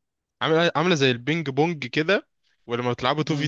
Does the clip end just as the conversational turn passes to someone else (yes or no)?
no